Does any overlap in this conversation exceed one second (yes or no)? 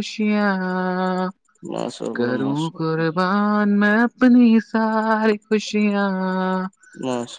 no